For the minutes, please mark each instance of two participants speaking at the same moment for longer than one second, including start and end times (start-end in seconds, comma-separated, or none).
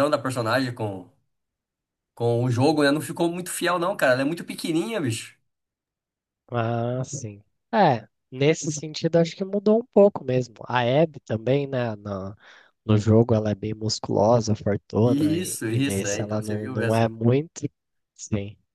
15.0-17.1